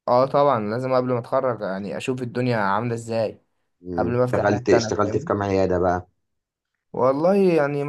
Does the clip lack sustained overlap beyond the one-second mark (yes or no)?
no